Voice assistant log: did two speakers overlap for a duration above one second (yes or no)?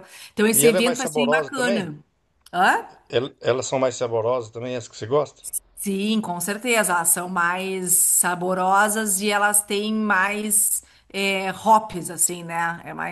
yes